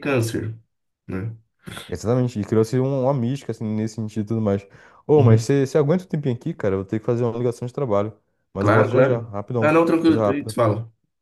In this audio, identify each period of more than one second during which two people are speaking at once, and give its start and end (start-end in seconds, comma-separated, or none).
8.6-10.5